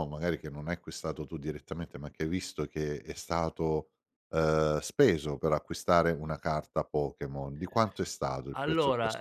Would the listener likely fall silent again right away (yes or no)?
no